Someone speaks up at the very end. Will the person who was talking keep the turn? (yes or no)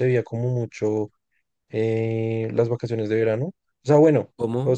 yes